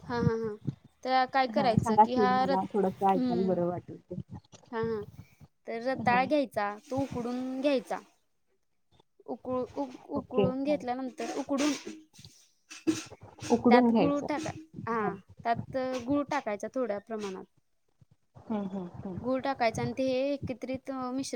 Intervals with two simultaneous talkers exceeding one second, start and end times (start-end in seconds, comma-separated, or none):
2.1-3.6